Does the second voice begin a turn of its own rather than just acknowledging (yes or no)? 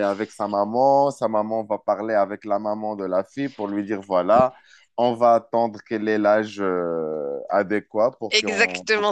yes